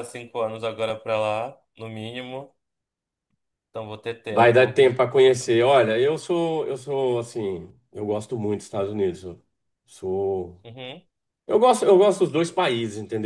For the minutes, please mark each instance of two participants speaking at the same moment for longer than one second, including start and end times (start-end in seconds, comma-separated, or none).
none